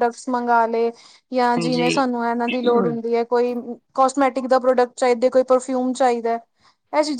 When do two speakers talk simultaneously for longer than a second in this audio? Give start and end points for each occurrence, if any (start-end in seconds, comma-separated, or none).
1.6-3.1